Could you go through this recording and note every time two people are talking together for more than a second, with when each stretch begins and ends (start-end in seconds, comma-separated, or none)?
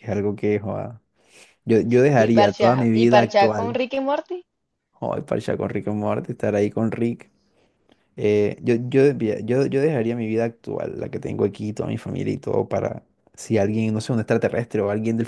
2.1-3.8